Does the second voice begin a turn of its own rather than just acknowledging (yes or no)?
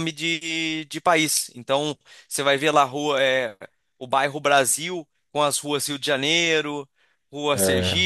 no